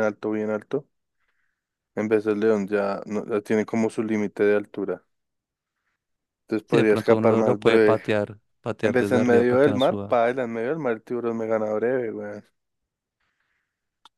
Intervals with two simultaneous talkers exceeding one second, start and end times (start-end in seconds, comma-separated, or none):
6.7-8.0, 8.8-10.2